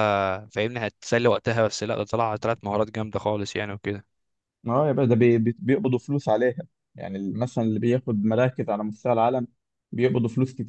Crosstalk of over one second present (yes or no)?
no